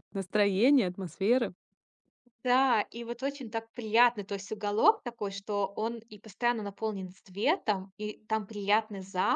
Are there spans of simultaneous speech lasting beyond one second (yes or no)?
no